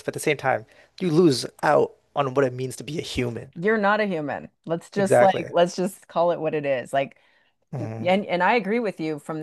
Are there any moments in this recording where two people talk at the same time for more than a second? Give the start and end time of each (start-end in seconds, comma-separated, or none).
none